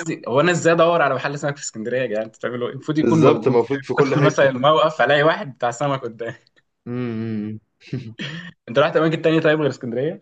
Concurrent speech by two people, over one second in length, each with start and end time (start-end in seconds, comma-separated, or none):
3.0-4.5